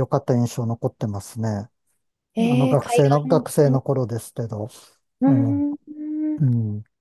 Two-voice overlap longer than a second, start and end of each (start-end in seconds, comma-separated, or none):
2.4-3.8